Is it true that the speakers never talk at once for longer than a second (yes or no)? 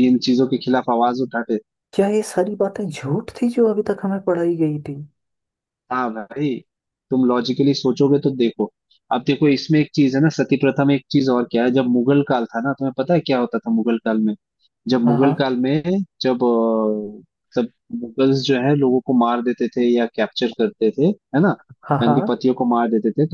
yes